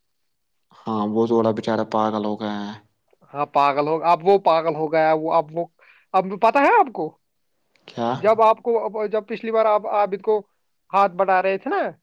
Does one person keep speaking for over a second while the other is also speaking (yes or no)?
no